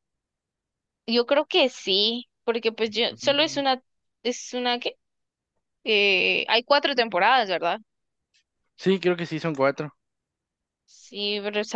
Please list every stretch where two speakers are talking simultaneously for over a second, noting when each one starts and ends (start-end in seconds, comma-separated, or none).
none